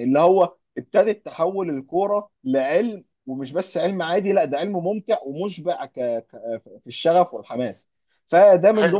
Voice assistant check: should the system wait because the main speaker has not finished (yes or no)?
yes